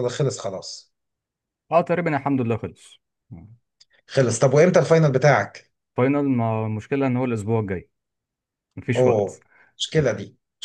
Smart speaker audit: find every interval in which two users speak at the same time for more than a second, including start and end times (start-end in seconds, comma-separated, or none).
none